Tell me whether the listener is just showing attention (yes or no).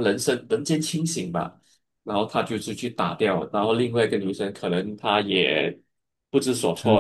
yes